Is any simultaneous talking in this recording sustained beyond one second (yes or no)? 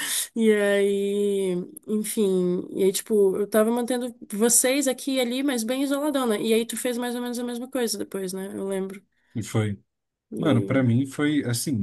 no